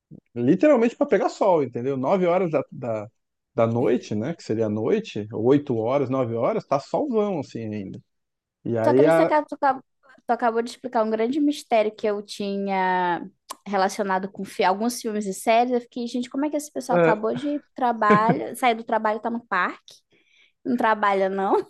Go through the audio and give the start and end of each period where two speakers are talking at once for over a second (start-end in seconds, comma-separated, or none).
none